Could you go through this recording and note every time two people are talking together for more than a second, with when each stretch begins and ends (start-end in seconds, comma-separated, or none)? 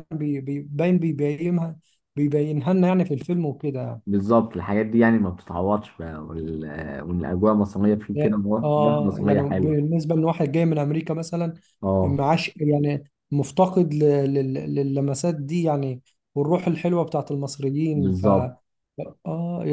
8.1-9.8